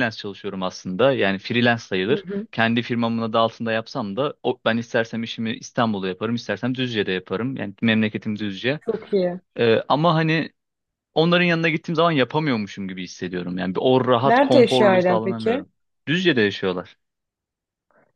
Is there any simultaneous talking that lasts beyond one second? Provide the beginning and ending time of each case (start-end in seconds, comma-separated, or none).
14.2-15.7